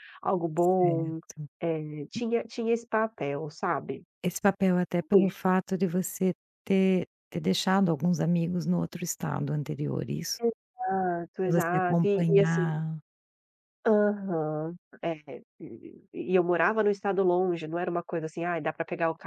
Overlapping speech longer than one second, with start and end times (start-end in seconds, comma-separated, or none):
11.4-12.7